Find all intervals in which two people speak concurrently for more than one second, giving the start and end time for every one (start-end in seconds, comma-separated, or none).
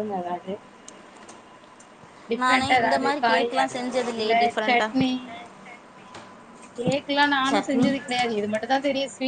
2.4-5.1